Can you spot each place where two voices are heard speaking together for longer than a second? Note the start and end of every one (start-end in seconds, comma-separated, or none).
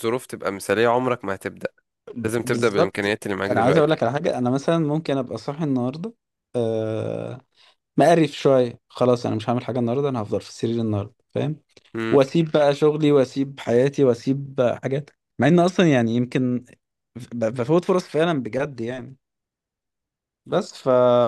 2.4-3.9